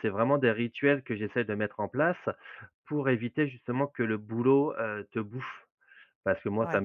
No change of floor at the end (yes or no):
yes